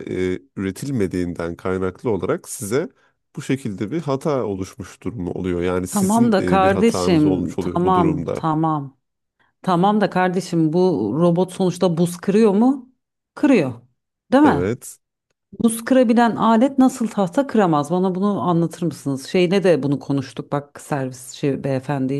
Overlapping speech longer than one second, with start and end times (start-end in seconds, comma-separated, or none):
5.9-8.4